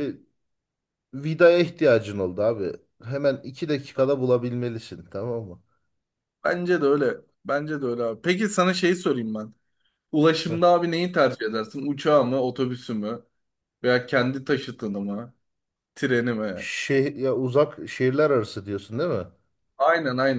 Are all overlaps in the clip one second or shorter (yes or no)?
yes